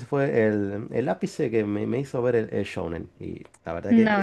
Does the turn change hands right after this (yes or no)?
yes